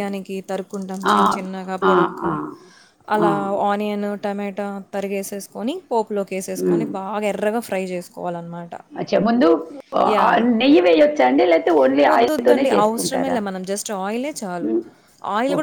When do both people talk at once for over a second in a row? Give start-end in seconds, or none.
12.1-13.4